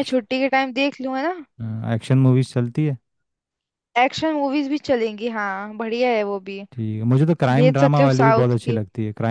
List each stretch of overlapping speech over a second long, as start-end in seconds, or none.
7.5-8.8